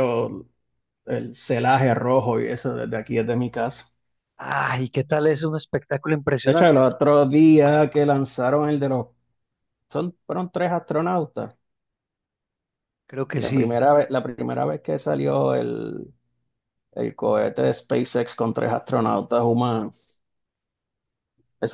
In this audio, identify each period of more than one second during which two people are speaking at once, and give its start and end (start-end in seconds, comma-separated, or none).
none